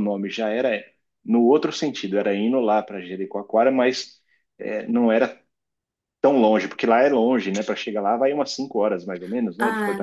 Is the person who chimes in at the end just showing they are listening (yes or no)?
no